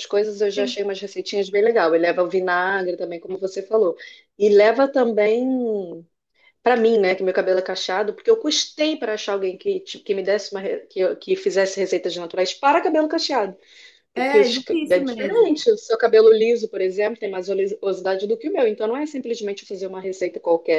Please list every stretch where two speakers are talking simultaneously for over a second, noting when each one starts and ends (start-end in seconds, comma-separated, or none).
14.1-15.5